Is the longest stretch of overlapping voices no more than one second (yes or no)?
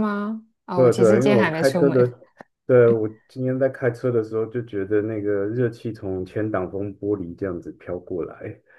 no